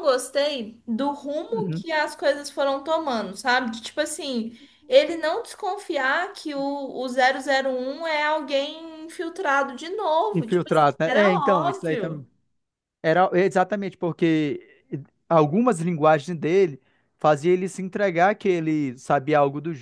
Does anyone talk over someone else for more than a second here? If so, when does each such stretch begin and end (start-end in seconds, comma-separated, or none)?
10.3-12.3